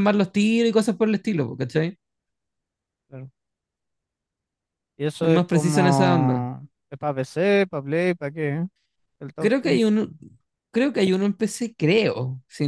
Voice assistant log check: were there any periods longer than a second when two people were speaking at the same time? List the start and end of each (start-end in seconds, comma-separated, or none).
5.2-6.4